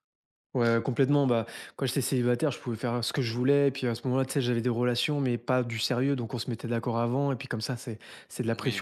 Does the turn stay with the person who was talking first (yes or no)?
yes